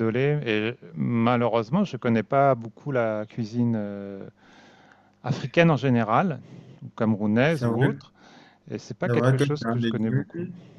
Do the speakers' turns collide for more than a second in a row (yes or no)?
yes